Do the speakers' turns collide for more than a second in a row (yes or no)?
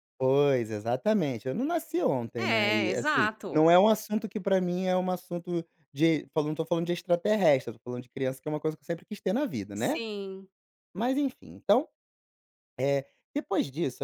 yes